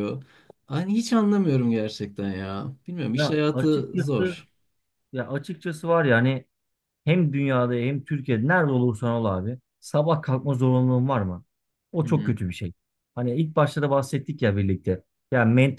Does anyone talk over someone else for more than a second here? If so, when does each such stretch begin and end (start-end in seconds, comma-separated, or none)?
3.1-4.4